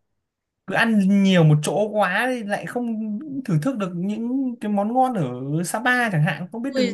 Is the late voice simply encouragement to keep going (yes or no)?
no